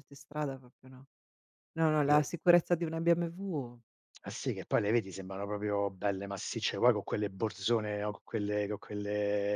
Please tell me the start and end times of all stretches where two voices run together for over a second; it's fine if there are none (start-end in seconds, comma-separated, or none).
none